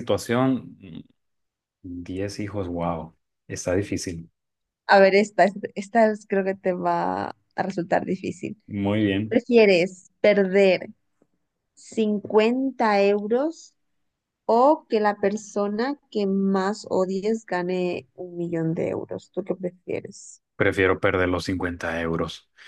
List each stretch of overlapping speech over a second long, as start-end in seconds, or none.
none